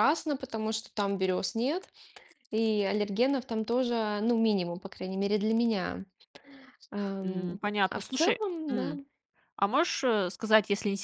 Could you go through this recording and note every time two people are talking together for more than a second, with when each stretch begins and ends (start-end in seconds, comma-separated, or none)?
7.2-8.9